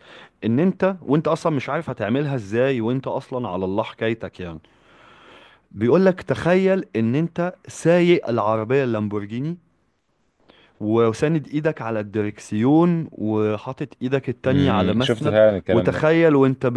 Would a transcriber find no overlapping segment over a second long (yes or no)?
no